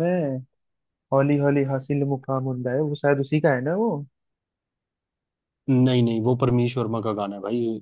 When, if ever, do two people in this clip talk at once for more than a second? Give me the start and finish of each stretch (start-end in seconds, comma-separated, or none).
none